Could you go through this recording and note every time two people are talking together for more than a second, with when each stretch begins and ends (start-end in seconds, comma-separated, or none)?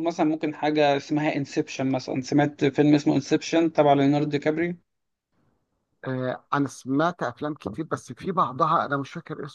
none